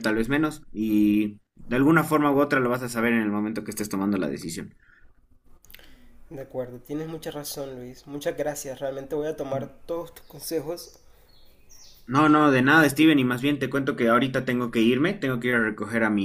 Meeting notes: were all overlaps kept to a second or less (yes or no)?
yes